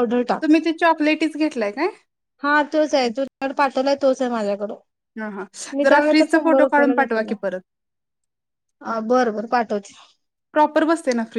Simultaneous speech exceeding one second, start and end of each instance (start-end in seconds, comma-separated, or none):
5.8-7.3